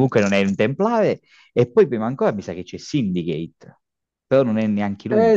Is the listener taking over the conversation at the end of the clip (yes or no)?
yes